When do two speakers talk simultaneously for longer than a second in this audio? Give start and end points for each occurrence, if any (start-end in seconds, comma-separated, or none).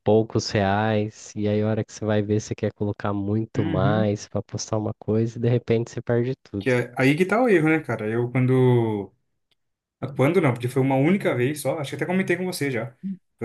none